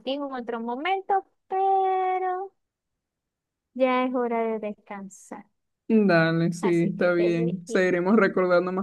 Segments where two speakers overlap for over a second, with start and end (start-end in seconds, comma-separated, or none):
6.6-7.8